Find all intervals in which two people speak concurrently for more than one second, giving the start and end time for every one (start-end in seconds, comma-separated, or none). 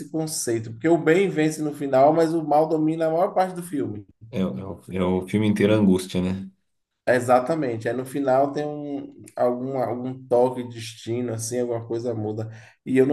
none